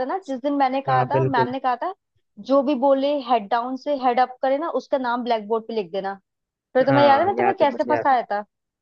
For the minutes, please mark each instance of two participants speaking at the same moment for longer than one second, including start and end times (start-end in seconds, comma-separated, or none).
6.9-8.2